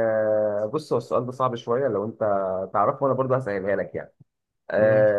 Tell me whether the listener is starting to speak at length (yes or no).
no